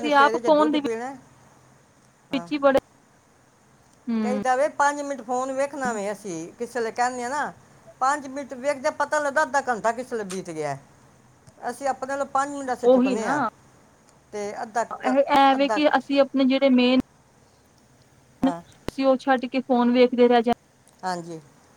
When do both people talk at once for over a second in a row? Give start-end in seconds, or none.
none